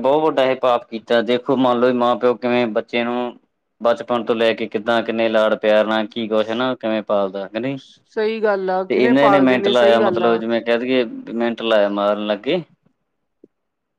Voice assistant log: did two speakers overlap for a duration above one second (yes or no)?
yes